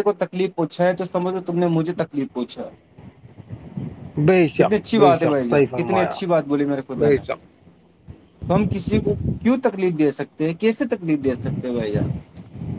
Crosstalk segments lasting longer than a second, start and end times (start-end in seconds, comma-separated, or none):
4.6-6.2